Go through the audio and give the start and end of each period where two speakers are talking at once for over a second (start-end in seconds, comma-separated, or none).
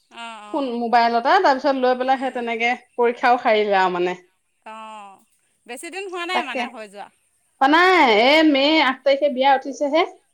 none